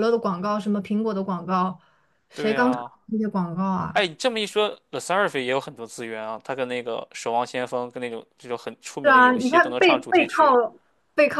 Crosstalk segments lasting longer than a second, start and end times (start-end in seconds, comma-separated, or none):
9.0-10.5